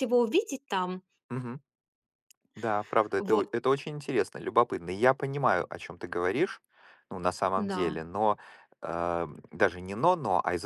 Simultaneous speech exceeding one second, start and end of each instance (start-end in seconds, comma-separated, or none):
none